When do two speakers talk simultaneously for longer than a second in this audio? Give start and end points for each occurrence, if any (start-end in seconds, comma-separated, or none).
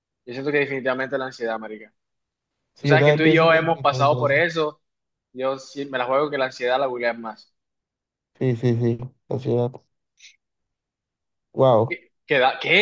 2.8-4.4